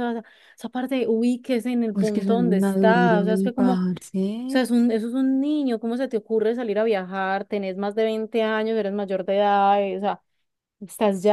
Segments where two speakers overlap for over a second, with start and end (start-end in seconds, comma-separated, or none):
1.9-3.8